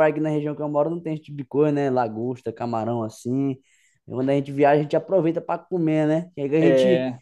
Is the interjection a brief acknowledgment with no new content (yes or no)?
yes